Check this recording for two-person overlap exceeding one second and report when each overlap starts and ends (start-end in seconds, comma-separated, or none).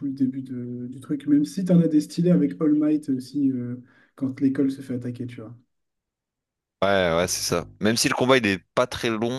none